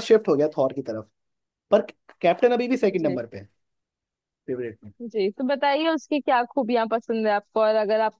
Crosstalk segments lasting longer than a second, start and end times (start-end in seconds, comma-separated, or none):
none